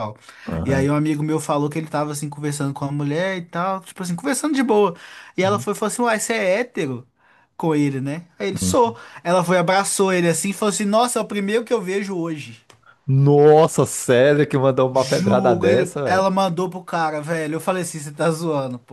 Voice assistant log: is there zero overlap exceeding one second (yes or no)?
no